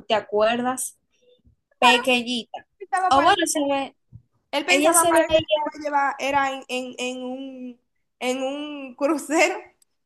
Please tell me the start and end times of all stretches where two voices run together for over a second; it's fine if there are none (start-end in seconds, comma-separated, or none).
none